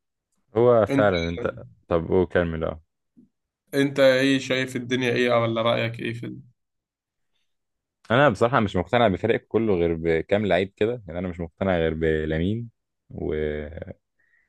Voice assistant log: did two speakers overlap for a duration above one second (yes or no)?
no